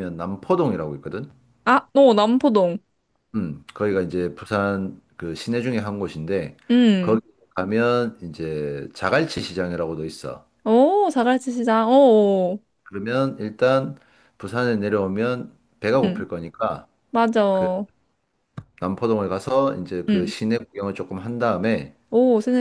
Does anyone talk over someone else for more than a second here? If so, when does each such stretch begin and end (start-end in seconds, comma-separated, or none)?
none